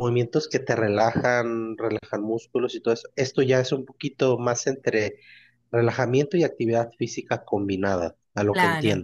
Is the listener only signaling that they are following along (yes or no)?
no